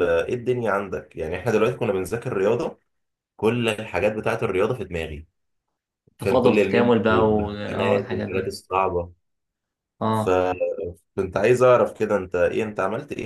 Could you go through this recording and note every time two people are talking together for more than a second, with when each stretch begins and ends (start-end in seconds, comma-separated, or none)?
6.2-8.5